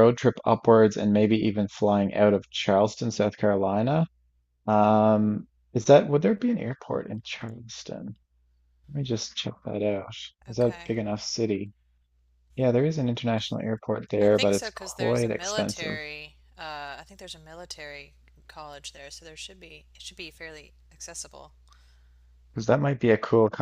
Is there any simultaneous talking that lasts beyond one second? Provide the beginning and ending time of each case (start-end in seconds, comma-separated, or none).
14.2-16.0